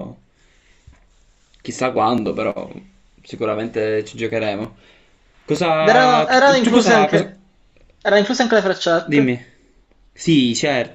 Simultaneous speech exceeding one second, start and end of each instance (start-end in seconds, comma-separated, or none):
5.8-7.3